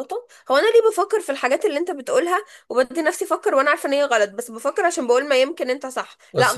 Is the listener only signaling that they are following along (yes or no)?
yes